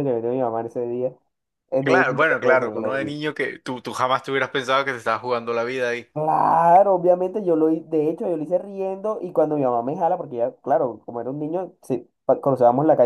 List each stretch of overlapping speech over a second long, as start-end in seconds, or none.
1.8-3.1